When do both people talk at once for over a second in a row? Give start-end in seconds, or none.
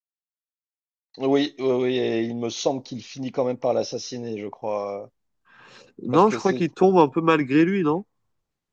none